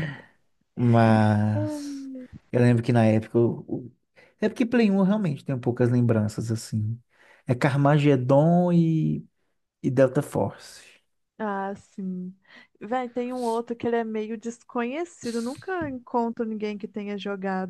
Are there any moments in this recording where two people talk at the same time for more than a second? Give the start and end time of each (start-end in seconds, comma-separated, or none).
none